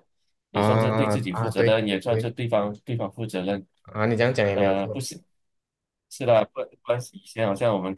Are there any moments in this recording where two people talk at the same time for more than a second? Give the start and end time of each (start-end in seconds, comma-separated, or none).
0.5-2.3